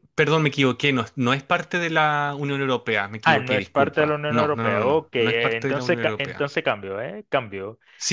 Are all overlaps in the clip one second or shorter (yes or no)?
no